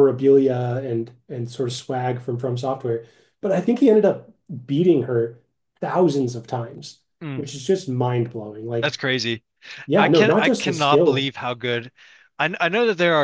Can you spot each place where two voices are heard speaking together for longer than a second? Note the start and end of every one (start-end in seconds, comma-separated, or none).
9.9-11.3